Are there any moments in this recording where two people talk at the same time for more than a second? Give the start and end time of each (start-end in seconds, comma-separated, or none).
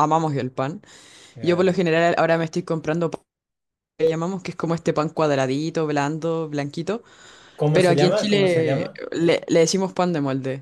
7.7-9.0